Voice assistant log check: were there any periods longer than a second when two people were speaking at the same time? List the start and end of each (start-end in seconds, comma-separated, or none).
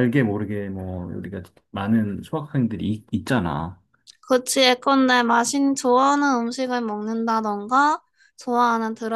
none